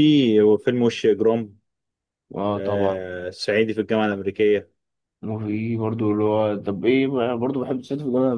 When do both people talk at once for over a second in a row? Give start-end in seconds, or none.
none